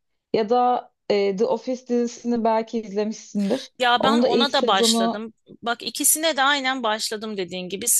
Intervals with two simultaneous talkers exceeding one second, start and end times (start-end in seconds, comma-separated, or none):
3.8-5.2